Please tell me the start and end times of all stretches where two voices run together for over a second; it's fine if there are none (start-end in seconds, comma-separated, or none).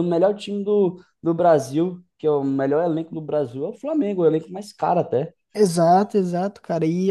none